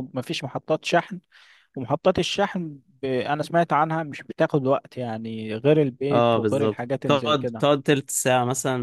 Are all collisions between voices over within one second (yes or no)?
no